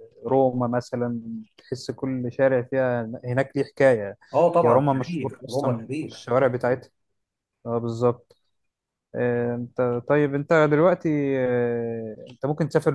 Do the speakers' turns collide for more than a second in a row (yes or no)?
yes